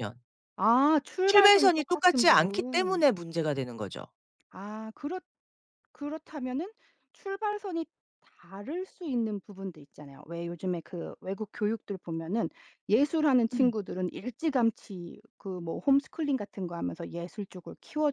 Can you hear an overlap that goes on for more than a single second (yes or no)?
yes